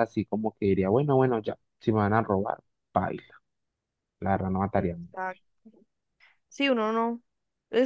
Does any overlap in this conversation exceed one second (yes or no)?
no